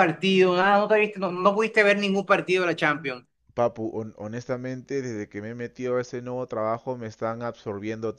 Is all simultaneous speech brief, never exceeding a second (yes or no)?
yes